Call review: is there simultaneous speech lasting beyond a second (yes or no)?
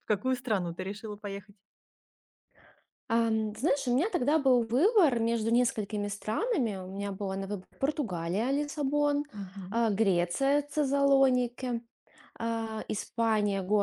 no